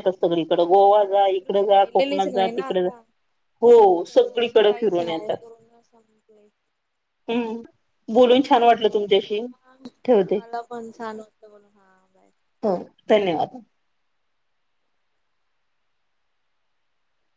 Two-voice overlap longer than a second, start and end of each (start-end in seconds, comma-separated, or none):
0.9-2.9, 3.9-5.4